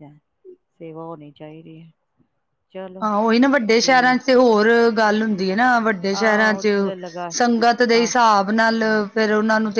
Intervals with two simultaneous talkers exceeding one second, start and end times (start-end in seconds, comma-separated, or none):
none